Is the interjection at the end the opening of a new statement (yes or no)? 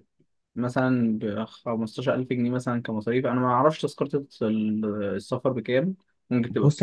yes